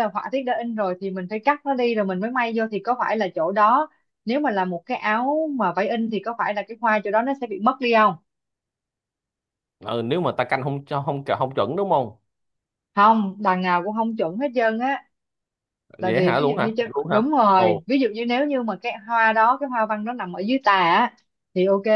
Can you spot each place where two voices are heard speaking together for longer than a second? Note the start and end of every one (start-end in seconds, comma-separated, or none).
16.0-17.8